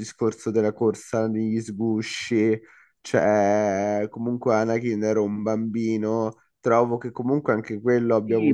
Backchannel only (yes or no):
no